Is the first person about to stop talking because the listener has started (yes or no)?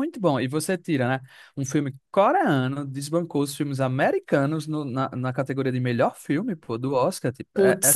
yes